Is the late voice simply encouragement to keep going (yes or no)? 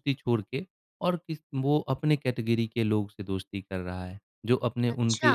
yes